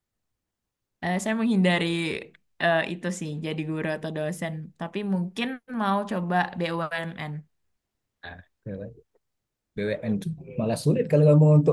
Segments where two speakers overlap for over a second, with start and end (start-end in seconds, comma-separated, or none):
none